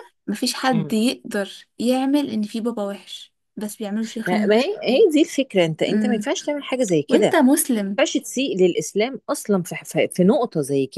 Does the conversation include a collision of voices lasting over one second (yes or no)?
no